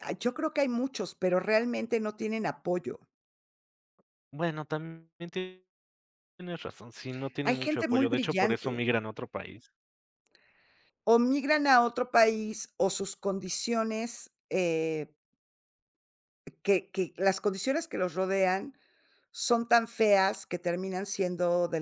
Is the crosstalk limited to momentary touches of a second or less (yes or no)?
no